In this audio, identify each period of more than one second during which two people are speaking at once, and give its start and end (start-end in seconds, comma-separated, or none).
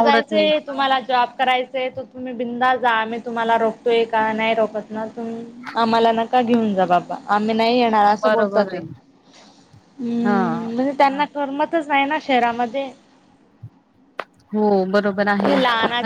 none